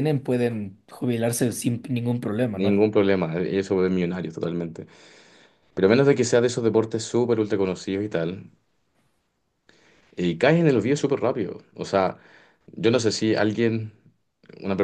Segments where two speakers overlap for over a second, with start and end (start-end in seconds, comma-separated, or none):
none